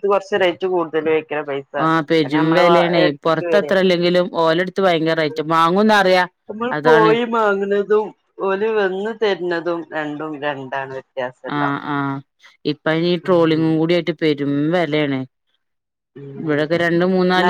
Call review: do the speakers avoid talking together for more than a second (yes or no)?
yes